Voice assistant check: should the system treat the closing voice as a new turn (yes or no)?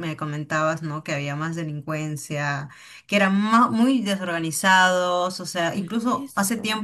no